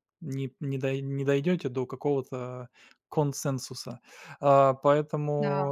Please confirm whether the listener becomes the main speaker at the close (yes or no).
no